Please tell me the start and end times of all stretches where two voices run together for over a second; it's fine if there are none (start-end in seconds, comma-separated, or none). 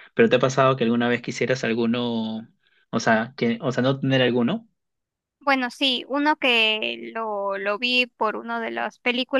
none